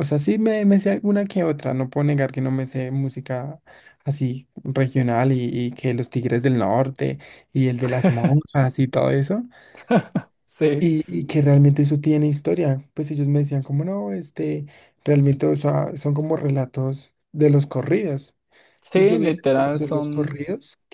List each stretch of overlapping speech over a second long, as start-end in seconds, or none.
18.9-20.4